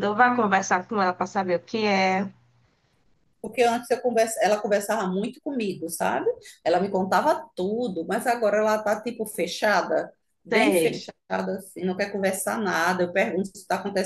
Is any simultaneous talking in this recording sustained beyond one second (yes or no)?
no